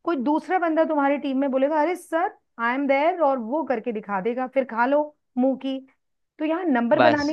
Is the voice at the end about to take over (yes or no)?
no